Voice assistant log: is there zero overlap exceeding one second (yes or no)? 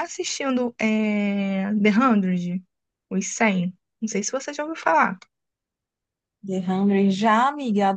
yes